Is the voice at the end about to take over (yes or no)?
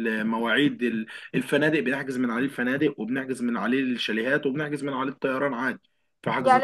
yes